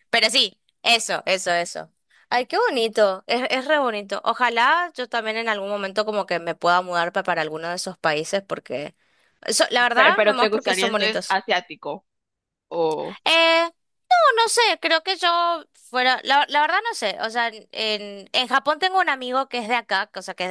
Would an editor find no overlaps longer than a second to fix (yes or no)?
no